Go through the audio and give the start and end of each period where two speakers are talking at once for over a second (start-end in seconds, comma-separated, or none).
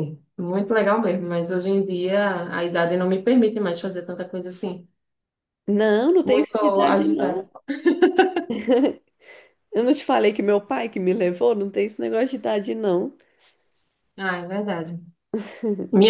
6.2-7.5